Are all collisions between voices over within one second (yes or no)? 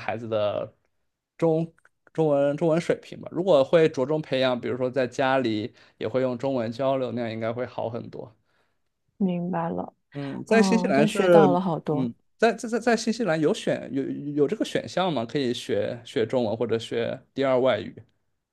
no